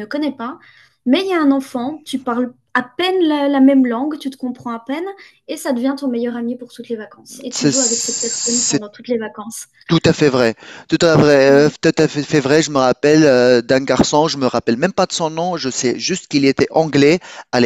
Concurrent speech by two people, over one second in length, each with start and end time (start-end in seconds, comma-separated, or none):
7.5-8.8